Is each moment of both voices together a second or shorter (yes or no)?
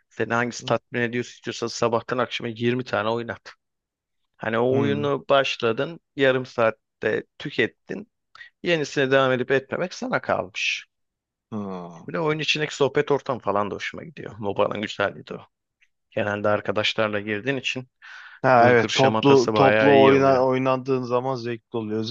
no